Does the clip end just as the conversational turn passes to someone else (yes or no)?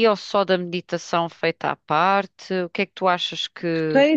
yes